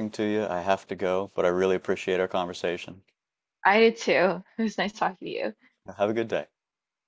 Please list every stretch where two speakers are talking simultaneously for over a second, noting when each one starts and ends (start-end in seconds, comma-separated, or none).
none